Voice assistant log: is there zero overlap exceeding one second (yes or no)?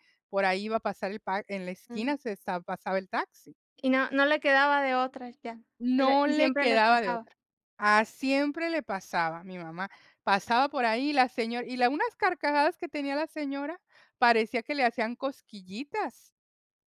no